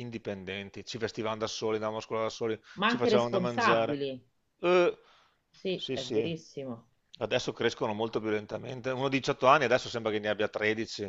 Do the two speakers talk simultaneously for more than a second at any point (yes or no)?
yes